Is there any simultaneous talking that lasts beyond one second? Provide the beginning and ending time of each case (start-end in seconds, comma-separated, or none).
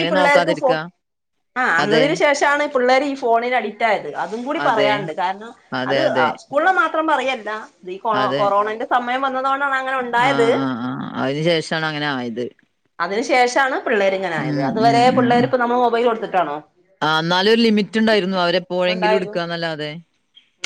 none